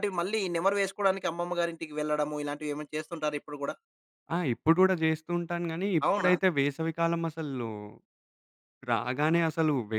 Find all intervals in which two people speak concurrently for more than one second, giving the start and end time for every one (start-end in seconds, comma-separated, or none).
none